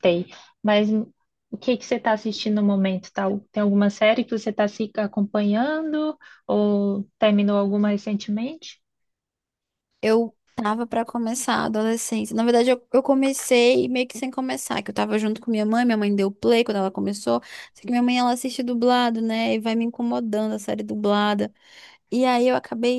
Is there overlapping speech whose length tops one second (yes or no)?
no